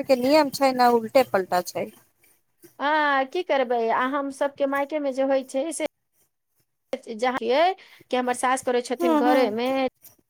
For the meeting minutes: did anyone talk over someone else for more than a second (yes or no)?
no